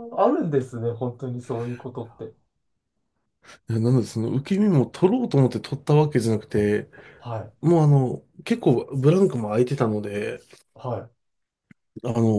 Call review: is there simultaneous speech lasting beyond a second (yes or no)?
no